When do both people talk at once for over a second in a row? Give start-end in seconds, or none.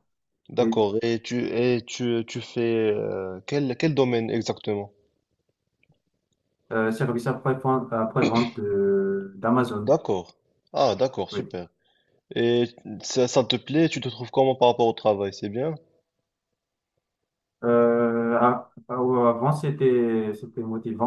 none